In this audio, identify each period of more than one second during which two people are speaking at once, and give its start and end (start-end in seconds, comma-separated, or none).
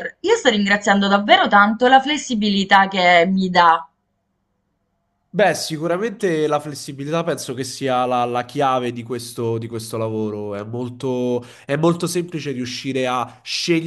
none